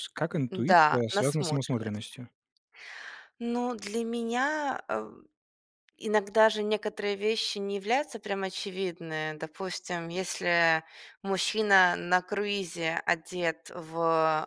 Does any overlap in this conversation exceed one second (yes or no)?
yes